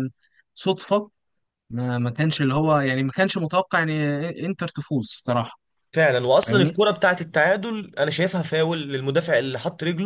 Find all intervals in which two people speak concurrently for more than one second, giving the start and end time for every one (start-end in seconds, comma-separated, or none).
none